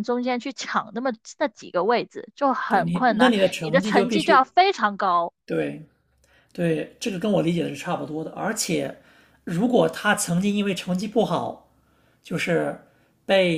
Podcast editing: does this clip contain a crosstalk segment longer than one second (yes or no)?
yes